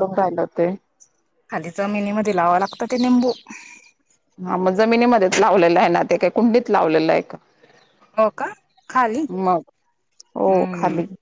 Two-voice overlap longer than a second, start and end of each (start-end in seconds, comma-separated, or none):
none